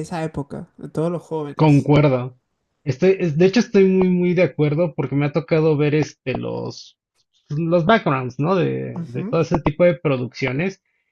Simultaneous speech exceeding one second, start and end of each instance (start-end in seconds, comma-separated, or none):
none